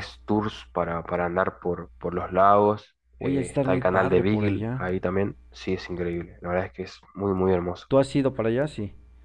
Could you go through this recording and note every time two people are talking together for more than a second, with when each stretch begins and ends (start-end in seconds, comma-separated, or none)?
3.2-4.8